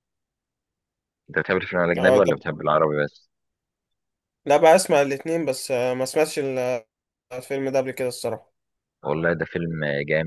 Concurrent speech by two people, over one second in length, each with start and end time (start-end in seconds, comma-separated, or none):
none